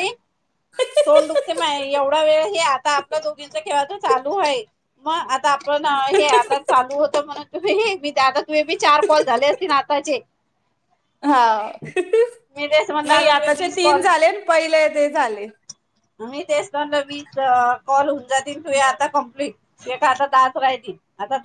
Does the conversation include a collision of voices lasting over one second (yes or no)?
yes